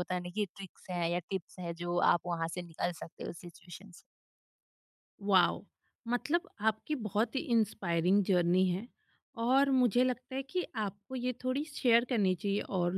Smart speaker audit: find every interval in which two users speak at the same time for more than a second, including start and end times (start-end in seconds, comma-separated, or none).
none